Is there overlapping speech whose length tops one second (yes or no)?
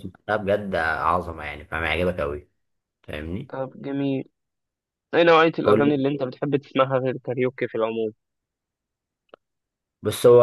no